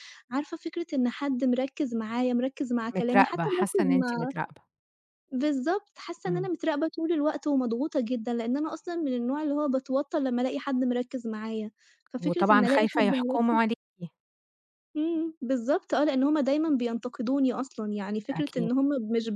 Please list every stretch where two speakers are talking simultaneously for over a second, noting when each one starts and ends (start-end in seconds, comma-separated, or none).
3.0-4.3, 12.2-13.6